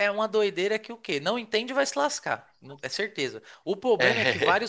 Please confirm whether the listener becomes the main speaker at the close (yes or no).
no